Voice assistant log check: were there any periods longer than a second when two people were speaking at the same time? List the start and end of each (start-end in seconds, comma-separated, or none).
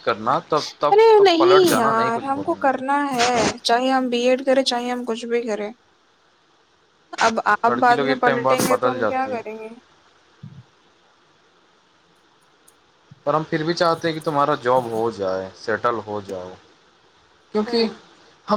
0.9-2.9, 7.7-9.4